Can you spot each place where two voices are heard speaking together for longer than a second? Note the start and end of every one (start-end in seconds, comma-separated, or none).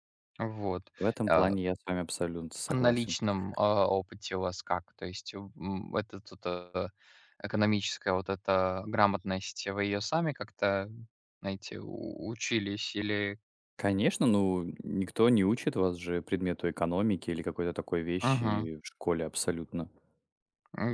none